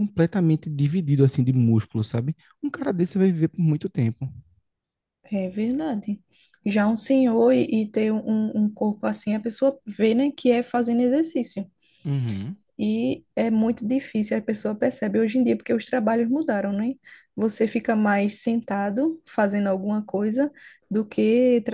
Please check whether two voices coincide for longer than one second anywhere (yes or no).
no